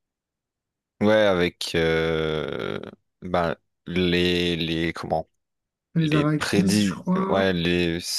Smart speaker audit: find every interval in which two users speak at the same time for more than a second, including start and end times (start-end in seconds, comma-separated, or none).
6.0-7.5